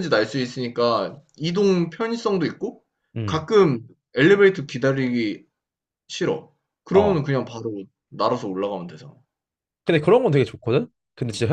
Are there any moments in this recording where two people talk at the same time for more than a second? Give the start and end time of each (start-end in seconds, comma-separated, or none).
none